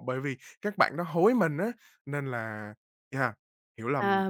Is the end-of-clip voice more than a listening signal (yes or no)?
yes